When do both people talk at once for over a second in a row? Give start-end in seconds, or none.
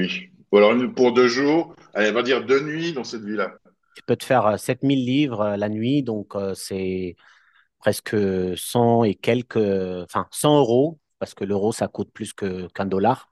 none